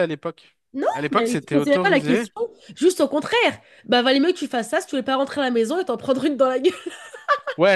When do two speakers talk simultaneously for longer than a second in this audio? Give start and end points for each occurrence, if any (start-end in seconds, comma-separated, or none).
0.9-2.3